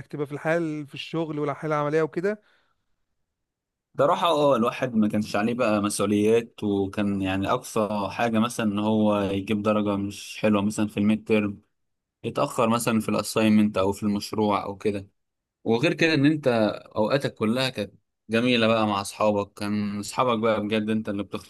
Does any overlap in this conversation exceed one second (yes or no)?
no